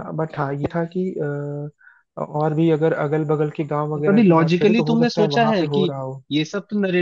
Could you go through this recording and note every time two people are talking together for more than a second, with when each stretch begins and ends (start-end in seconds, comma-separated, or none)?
4.0-5.9